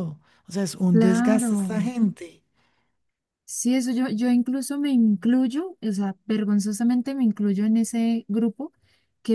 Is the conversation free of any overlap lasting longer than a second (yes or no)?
yes